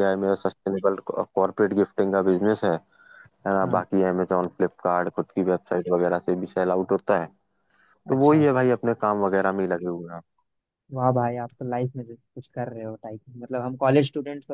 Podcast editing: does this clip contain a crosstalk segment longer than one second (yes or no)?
no